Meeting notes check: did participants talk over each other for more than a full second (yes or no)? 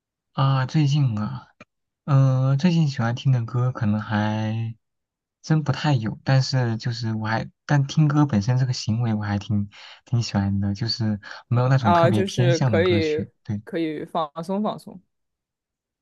yes